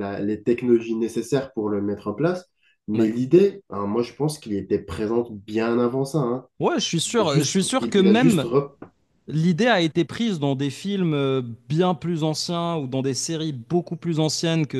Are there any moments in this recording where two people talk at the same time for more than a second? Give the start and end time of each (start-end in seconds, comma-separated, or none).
7.1-8.5